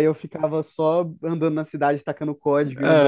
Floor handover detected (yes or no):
yes